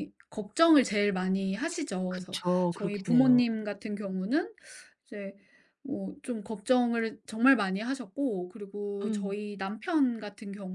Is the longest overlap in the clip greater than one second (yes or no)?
yes